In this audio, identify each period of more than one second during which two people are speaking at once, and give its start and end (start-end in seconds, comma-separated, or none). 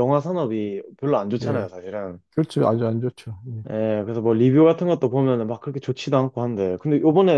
none